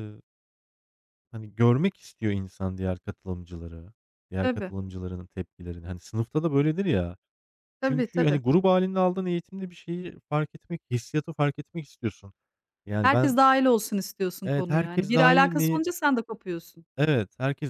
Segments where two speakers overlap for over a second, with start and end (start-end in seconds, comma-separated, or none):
14.4-15.8